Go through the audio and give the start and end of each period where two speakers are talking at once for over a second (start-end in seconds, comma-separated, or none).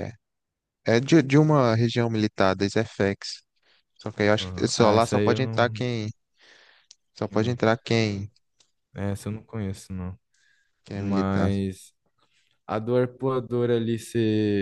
4.4-5.8